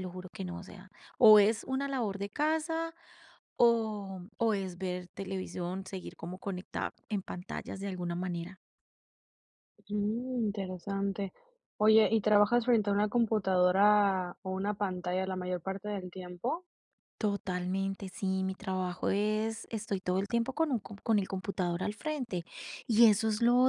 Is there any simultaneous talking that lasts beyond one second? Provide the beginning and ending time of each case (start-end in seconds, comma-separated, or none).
none